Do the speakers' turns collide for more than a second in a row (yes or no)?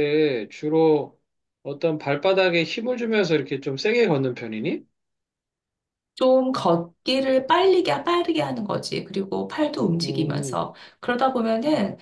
no